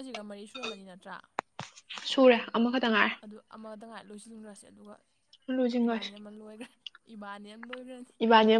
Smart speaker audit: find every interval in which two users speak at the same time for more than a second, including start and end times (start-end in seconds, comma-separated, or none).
none